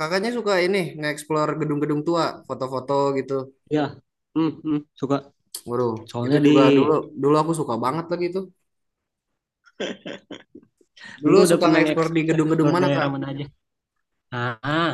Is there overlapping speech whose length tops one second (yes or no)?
yes